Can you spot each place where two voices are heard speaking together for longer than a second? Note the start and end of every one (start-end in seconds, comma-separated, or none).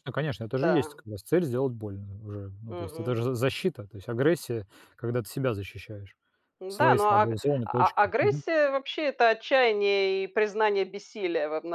6.7-8.4